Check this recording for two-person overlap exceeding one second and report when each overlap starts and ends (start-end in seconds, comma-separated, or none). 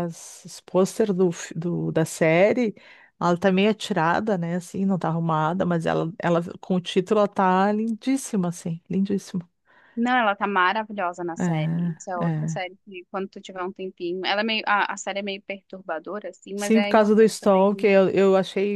16.6-17.9